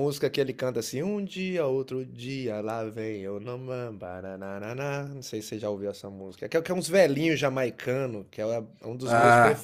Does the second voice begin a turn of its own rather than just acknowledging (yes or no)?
no